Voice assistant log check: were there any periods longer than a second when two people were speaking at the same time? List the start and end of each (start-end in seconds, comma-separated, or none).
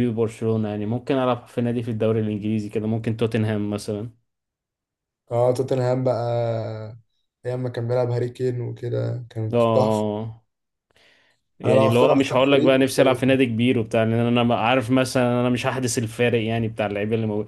11.7-13.2